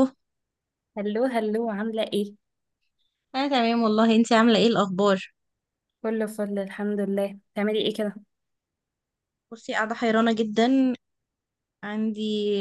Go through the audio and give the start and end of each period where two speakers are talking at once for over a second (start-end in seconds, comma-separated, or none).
none